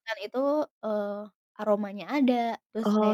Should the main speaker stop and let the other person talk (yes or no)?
no